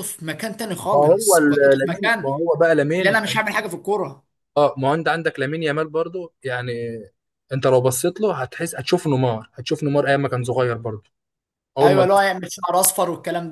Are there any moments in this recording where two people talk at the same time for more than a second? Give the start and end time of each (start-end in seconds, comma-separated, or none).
0.9-2.3